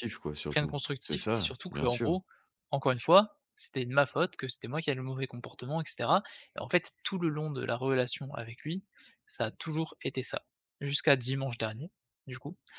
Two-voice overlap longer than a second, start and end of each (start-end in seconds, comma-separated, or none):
0.5-2.2